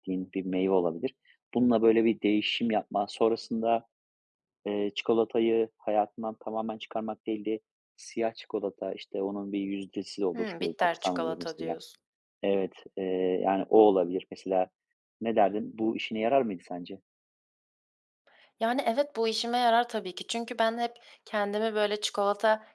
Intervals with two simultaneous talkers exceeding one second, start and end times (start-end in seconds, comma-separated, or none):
10.3-11.8